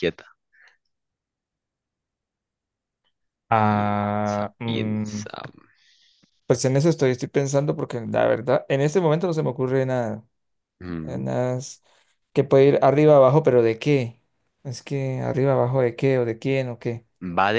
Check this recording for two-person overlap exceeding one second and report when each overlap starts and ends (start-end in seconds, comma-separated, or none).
3.7-5.2